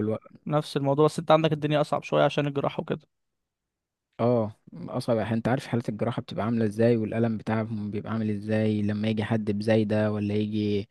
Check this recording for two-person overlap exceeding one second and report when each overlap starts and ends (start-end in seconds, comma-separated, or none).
none